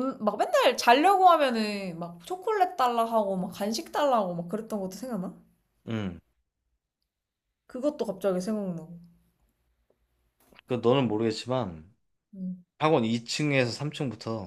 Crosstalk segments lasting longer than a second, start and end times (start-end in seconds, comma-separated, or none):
none